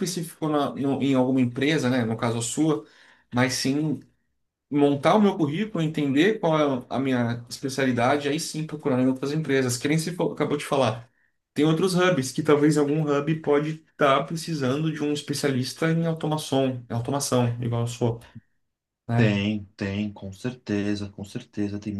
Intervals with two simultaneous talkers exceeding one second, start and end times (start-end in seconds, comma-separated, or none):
none